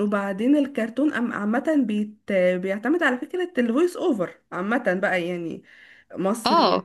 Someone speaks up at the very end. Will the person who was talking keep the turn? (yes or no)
yes